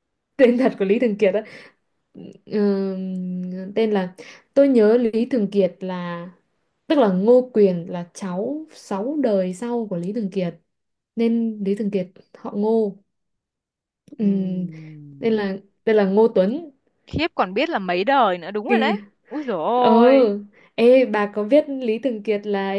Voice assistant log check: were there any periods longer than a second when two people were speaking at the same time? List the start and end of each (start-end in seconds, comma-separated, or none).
none